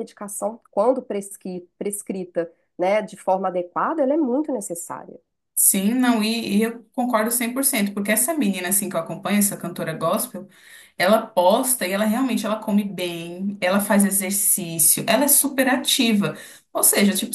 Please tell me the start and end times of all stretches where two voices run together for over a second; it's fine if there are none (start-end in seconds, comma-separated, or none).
none